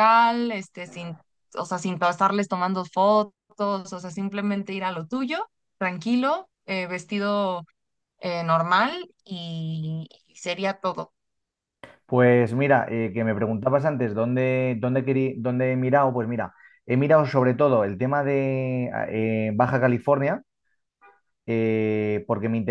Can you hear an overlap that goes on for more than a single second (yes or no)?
no